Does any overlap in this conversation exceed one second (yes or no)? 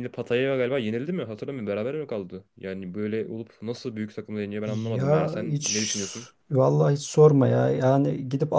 yes